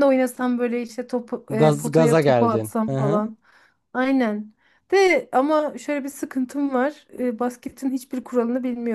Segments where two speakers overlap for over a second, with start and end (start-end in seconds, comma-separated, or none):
1.5-3.2